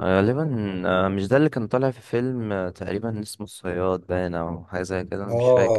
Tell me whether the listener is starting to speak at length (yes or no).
yes